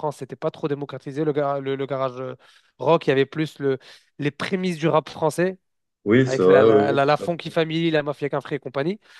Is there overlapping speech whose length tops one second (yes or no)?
yes